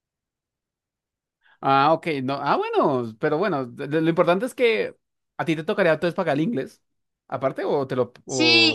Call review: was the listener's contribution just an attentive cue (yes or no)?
no